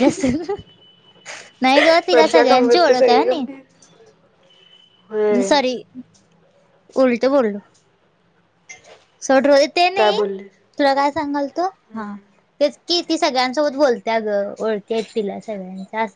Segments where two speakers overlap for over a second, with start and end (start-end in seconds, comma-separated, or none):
2.1-3.5